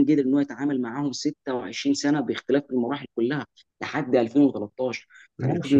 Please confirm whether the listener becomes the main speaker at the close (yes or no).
yes